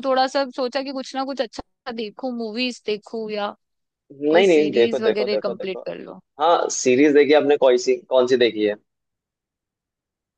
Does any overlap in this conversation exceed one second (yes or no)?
yes